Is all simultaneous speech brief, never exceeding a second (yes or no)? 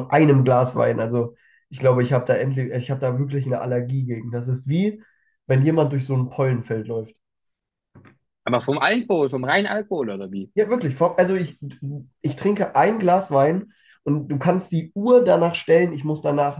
yes